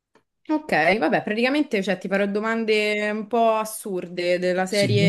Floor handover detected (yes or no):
no